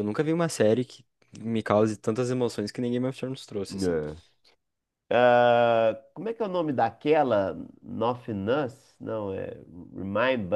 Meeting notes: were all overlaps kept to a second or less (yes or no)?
yes